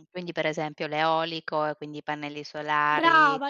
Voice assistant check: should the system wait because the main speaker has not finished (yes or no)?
no